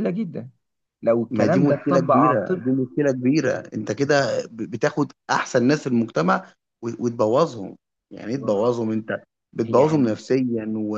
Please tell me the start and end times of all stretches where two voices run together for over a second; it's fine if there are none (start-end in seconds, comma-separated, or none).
1.3-2.6